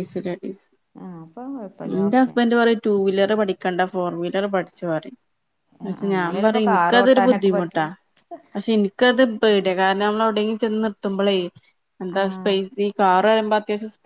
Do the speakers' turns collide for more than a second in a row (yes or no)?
yes